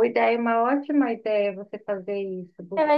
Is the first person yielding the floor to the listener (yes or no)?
yes